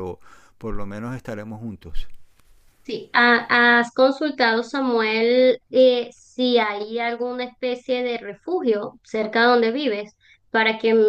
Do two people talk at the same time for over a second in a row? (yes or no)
no